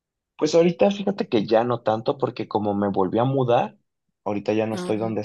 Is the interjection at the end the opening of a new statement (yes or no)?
no